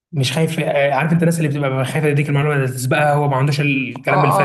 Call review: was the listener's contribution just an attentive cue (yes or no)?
no